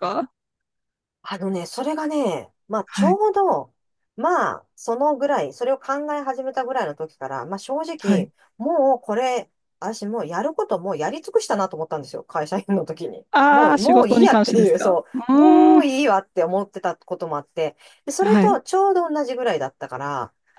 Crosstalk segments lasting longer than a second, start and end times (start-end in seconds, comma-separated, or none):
13.3-15.8